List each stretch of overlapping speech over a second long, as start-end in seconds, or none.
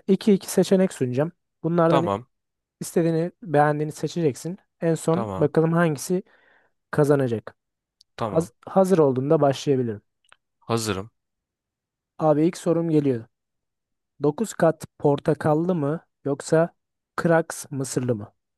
none